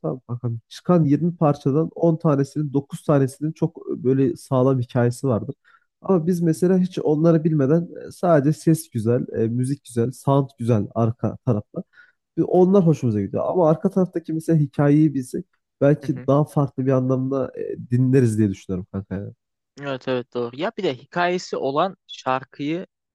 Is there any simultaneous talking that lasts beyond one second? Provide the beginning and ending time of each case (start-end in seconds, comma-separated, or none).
none